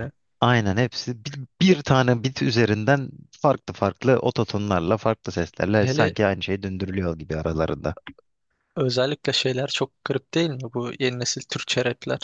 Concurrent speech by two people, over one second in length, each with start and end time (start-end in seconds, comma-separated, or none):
none